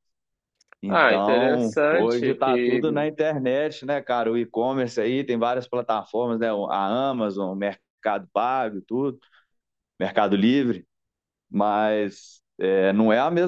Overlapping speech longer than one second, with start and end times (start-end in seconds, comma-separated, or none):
0.9-3.1